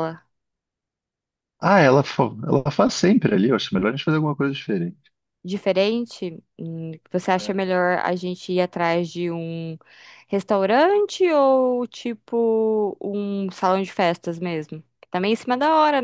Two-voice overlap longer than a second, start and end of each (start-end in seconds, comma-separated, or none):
none